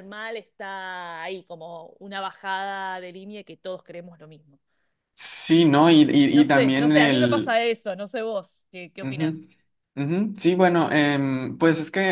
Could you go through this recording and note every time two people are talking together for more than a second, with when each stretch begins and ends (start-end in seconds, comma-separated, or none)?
6.3-7.6